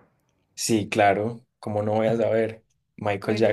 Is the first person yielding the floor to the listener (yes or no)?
yes